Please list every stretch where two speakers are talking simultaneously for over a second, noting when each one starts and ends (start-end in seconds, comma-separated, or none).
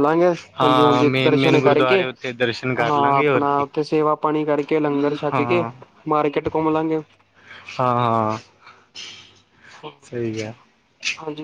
0.6-3.6